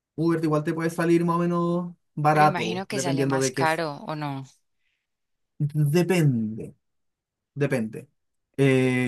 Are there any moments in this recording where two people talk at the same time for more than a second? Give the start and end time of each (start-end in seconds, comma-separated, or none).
2.3-3.8